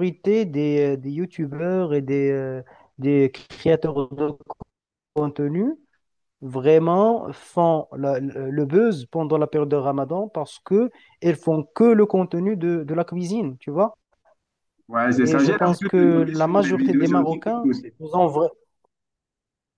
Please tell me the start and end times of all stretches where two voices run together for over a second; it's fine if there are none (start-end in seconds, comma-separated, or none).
15.2-17.9